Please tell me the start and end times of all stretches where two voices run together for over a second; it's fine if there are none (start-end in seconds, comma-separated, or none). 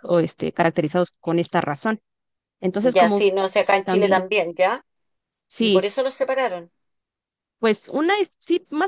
2.8-4.3